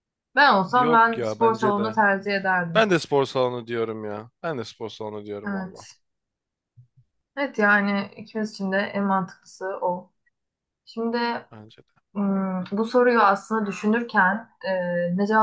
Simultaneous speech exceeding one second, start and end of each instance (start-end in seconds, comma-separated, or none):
0.7-2.0